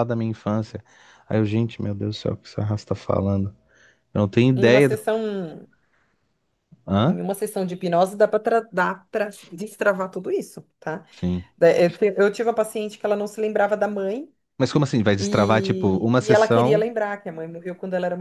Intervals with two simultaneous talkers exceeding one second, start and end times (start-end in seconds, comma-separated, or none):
15.2-16.9